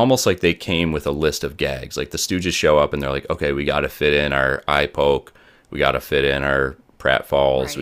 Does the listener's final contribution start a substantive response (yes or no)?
yes